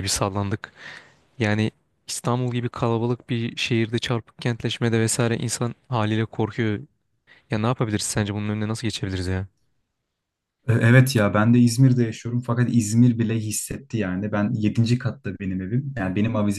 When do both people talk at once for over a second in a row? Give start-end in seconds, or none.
none